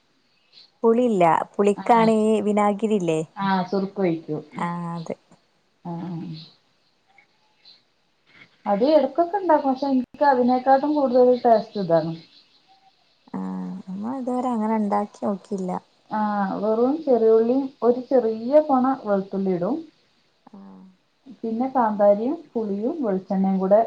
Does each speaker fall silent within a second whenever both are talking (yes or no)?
yes